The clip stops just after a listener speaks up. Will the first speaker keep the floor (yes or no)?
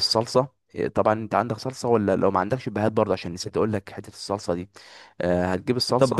no